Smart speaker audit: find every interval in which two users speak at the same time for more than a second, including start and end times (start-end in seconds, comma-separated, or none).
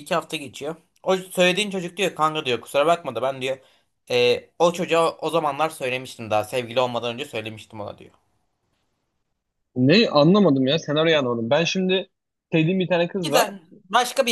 none